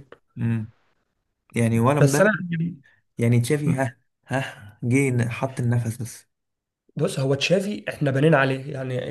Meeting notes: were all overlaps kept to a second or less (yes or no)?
yes